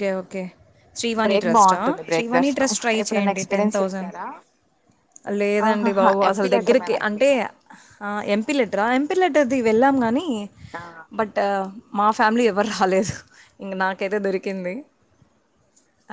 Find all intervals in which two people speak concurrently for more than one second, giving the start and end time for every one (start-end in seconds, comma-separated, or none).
1.2-4.1, 5.7-7.3